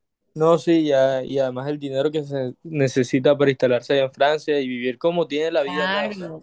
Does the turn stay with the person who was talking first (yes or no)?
no